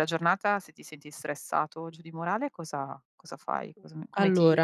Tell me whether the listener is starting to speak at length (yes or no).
yes